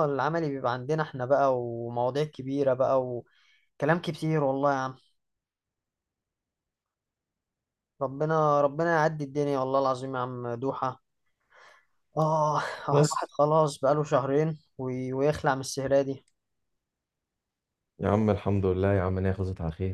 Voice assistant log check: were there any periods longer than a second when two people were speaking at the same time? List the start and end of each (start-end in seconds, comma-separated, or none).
none